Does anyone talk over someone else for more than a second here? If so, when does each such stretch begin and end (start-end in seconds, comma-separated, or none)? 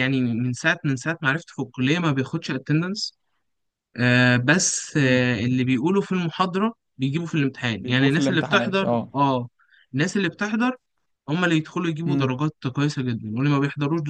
7.8-9.1